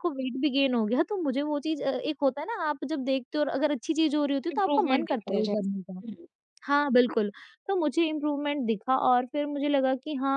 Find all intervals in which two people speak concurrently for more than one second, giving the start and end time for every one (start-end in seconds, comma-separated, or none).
4.5-6.0